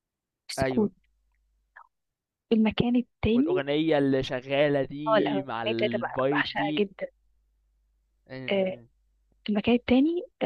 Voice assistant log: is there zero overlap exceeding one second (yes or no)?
no